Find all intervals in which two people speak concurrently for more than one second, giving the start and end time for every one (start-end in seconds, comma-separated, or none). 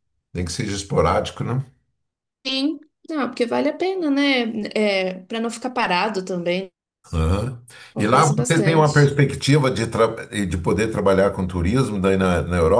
7.9-9.2